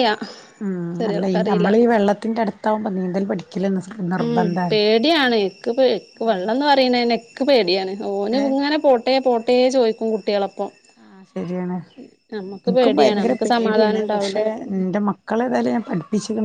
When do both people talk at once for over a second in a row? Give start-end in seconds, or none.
12.8-14.4